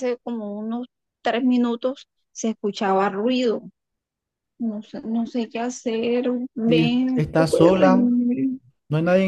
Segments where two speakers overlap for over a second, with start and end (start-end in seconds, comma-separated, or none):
6.7-8.1